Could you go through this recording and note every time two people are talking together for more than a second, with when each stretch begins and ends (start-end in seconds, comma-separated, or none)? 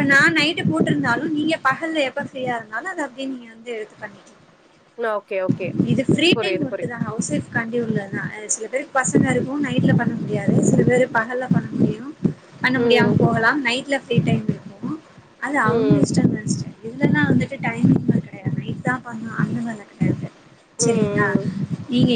none